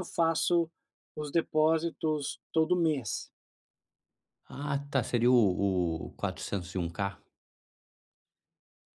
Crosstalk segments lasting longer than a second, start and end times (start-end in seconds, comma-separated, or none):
none